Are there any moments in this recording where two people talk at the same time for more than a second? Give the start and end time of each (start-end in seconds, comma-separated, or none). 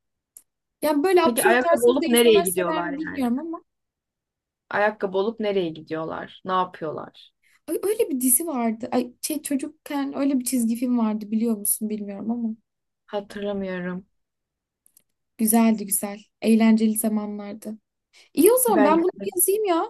1.2-3.3